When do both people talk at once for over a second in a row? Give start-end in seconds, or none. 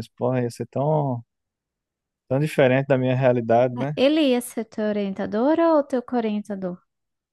none